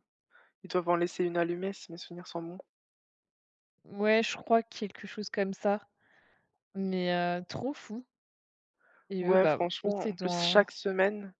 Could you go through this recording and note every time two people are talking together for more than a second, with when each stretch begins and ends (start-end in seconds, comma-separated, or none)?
9.2-10.7